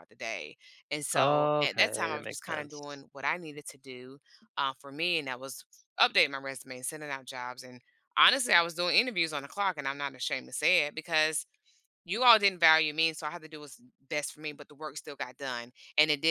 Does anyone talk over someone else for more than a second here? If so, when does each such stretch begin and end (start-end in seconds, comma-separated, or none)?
1.1-2.8